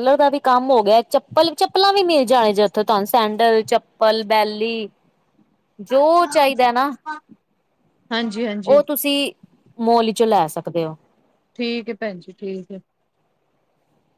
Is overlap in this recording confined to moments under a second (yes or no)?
yes